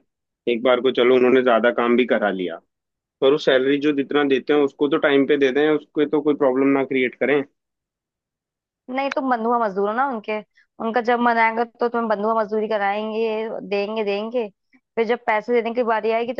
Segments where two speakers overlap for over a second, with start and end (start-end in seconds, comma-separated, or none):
none